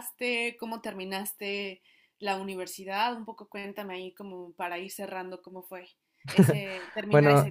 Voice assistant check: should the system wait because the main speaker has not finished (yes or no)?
no